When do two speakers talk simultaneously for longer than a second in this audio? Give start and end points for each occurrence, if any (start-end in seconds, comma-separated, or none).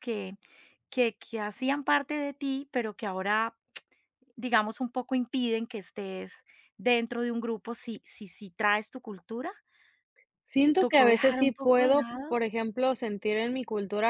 10.8-12.4